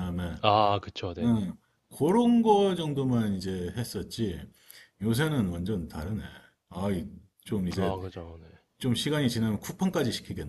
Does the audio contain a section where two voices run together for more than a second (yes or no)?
no